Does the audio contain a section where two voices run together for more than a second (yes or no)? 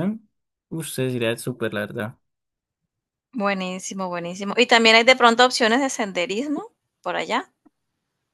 no